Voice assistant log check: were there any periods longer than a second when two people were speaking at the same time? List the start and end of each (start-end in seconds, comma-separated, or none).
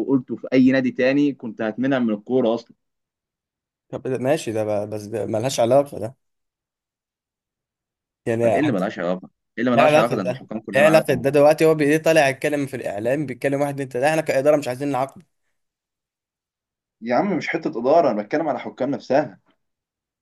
9.7-11.4